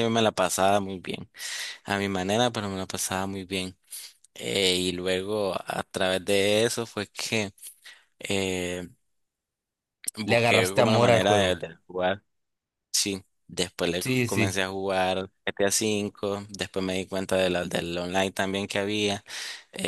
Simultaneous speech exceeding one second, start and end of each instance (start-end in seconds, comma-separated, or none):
10.3-11.6